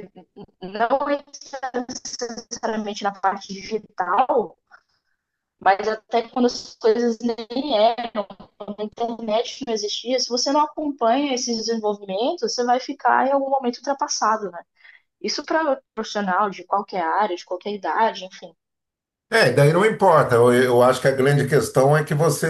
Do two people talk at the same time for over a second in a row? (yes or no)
no